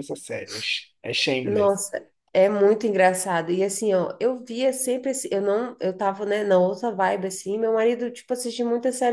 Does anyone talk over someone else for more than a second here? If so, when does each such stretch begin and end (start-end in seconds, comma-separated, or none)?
none